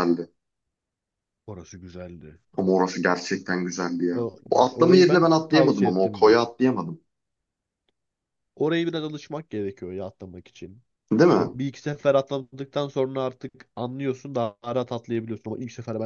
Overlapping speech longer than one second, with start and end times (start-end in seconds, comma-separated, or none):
4.1-6.4